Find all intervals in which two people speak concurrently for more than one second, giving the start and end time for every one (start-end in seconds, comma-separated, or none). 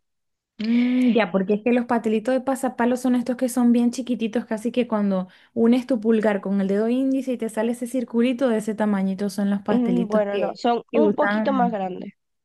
9.7-11.8